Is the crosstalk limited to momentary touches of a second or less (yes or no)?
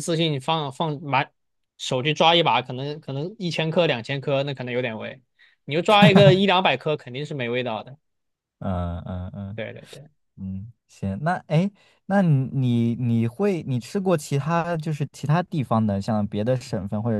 yes